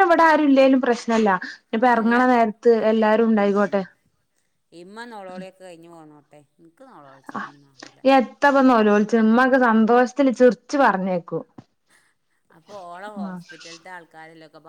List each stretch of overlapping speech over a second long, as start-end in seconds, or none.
none